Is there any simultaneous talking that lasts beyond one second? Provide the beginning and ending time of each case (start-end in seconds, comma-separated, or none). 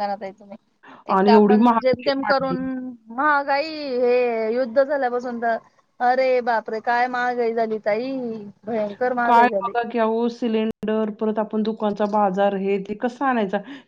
1.2-2.5